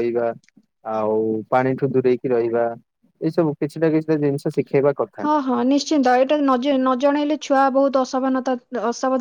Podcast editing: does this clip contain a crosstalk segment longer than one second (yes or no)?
no